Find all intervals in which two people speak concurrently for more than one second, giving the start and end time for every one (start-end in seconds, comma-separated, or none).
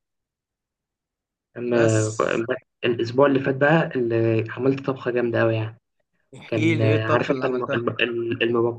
6.5-7.8